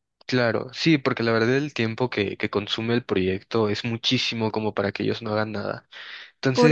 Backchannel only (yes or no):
yes